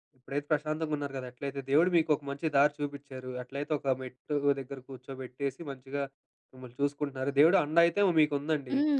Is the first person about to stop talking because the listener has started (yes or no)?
yes